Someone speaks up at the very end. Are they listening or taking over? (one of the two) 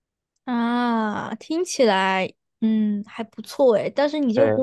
listening